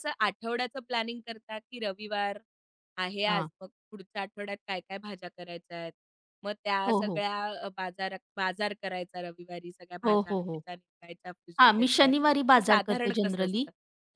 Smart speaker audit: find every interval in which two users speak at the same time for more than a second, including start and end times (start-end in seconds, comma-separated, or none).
11.6-13.6